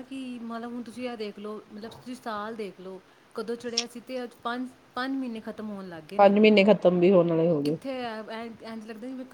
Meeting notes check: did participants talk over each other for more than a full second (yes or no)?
no